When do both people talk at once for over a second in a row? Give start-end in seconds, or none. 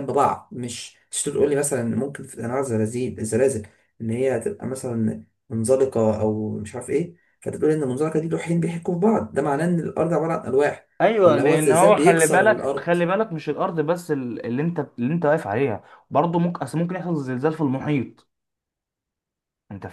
11.2-12.9